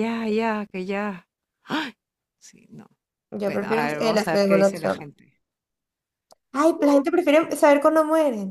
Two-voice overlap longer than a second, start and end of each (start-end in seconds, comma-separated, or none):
3.4-5.1